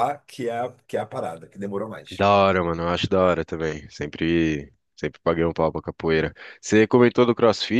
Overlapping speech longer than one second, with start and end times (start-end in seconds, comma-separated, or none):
none